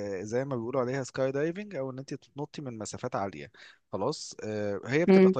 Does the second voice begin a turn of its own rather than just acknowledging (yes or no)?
no